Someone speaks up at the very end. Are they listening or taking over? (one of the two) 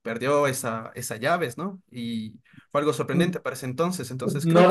taking over